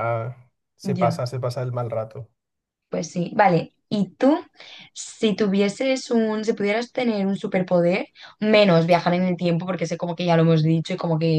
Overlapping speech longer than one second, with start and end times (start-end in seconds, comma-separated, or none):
none